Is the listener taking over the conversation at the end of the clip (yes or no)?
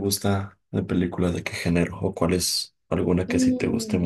yes